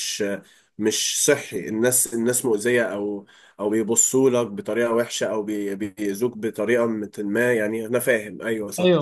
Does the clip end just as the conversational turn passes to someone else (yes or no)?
yes